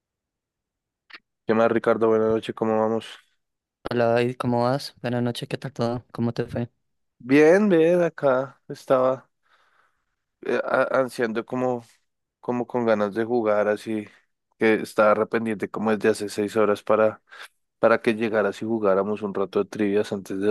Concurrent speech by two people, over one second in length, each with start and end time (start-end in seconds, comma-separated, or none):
none